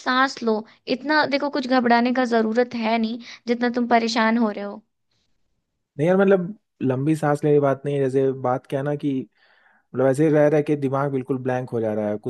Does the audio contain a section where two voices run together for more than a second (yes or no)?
no